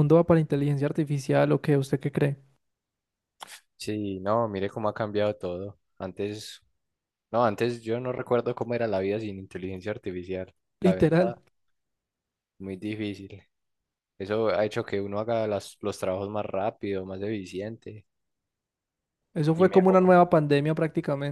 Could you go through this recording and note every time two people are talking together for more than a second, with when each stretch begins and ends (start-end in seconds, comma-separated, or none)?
none